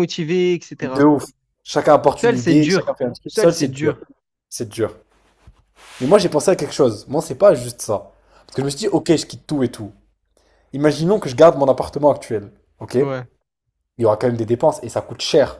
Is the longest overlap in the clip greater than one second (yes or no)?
yes